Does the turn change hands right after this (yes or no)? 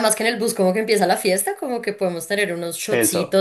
no